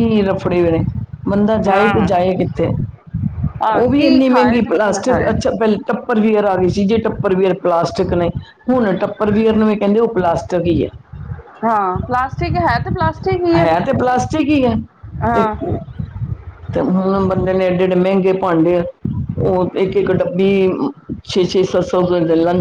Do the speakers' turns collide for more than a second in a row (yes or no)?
yes